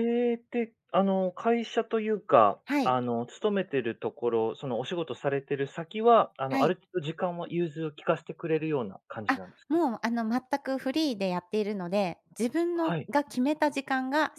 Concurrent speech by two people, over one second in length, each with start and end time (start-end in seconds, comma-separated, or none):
none